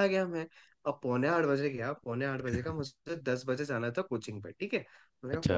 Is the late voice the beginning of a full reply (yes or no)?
no